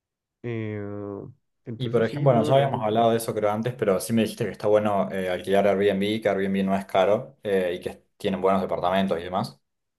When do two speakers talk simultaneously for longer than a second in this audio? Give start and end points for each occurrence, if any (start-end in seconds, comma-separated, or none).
1.8-3.1